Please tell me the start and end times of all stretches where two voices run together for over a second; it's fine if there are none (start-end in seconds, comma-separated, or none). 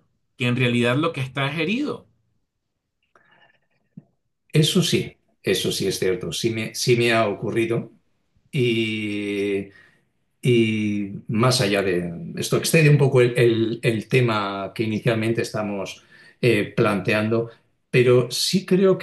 none